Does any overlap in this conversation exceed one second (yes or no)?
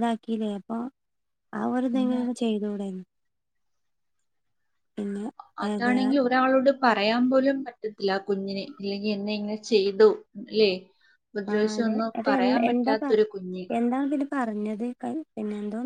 no